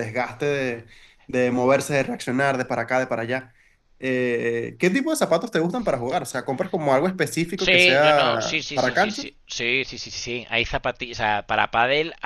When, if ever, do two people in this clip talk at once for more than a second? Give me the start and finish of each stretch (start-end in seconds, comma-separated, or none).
7.6-9.3